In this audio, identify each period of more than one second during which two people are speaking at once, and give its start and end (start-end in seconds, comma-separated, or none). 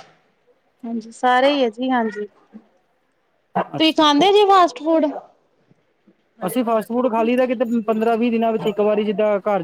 none